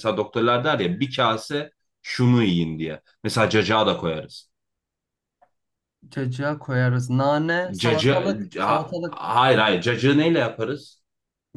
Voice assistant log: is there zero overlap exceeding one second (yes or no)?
no